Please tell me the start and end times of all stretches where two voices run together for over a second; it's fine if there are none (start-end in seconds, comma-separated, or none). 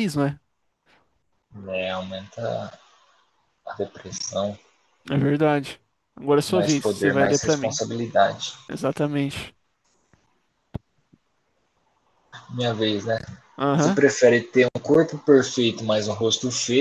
6.5-7.8